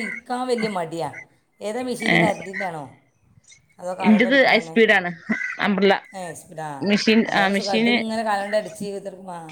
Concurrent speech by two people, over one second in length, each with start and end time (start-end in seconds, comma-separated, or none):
none